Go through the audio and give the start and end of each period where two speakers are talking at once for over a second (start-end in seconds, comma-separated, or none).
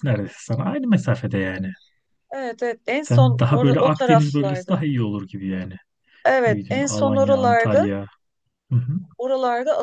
3.0-4.7, 6.5-7.9